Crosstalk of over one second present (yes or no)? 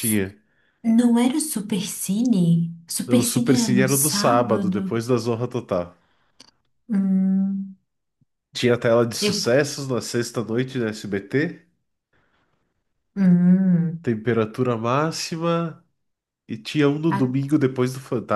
yes